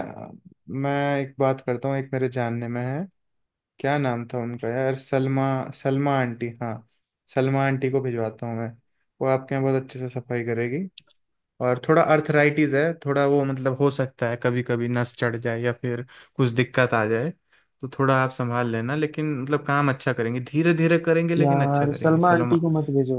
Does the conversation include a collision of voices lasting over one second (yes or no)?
yes